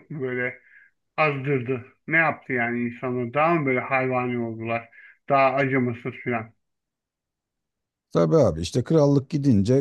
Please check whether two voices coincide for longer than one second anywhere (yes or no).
no